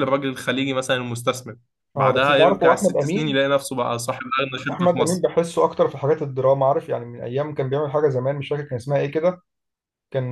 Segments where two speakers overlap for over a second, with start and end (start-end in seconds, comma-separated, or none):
2.0-3.4